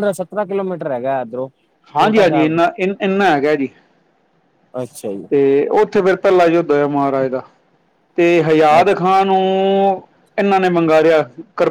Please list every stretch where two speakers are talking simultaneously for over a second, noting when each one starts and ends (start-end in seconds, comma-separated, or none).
none